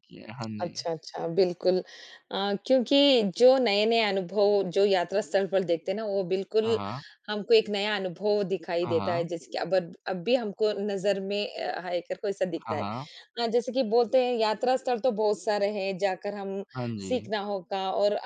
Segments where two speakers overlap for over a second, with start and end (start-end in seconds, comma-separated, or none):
none